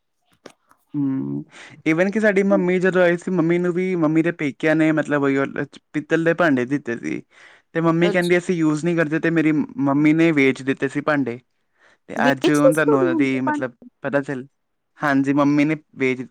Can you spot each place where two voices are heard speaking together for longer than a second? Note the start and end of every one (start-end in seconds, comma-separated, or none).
12.2-13.6